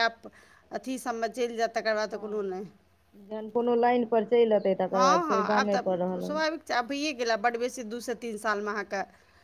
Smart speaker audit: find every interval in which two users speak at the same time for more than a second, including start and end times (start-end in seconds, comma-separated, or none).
none